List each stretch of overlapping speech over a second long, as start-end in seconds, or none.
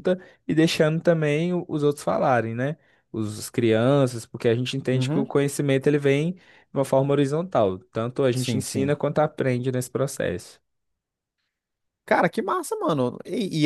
none